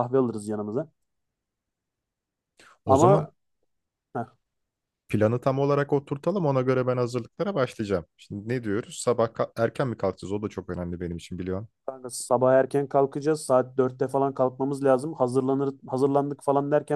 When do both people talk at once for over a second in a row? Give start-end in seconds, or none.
none